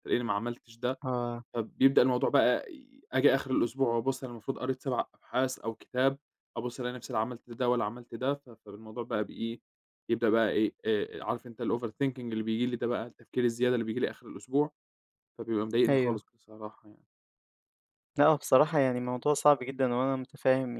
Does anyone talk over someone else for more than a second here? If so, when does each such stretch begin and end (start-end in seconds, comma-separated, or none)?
none